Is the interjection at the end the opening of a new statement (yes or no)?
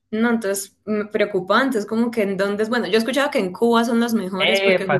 yes